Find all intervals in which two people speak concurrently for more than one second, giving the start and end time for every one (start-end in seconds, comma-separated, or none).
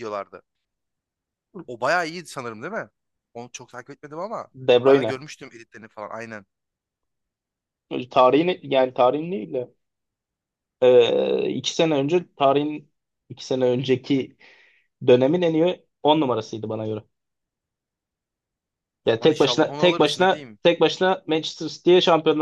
19.1-20.6